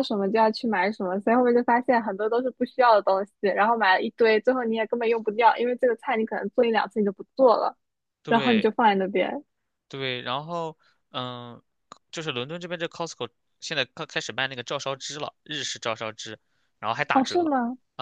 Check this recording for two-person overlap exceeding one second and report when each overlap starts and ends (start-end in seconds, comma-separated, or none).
none